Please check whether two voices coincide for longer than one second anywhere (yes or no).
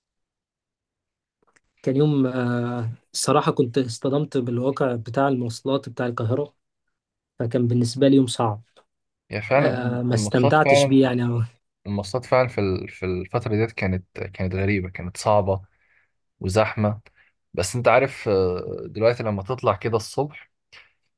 yes